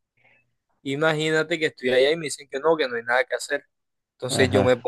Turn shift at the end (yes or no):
no